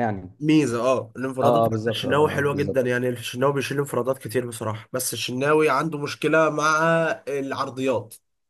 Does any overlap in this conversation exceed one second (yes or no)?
yes